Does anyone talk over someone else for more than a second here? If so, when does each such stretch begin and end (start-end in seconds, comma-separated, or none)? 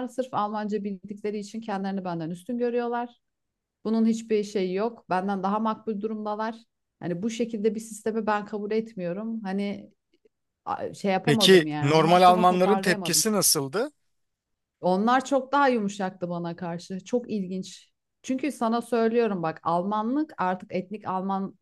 11.2-13.2